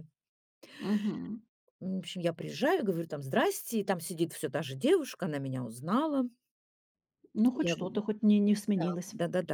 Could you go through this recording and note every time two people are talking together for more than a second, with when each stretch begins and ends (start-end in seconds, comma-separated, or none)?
none